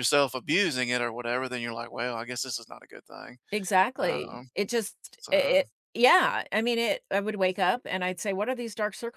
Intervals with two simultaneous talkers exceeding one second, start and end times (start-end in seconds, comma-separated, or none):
none